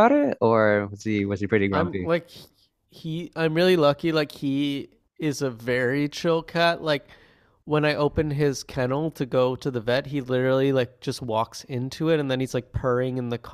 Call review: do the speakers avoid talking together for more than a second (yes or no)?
yes